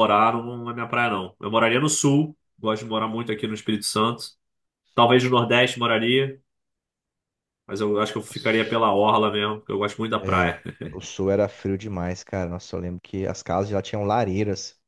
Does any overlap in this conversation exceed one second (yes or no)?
no